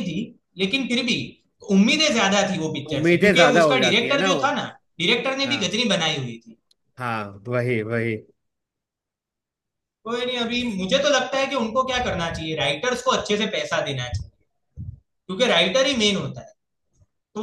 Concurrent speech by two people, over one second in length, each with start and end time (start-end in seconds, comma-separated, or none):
3.0-4.5